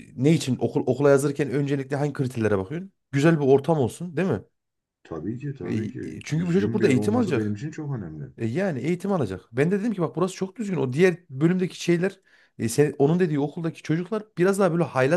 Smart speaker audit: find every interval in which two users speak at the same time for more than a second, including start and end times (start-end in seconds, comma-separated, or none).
5.6-7.6